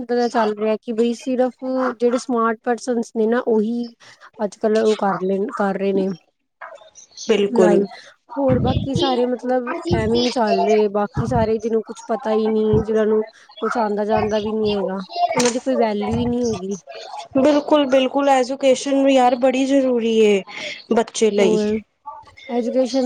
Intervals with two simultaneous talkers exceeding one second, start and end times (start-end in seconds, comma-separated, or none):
none